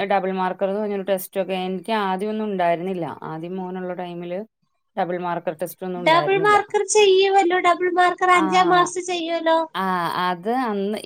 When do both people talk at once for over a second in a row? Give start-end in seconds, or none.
none